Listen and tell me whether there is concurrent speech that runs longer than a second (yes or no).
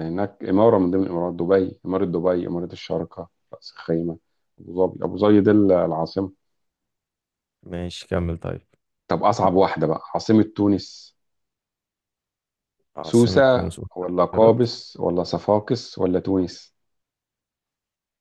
yes